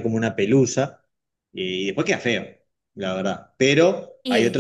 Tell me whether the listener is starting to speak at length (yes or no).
no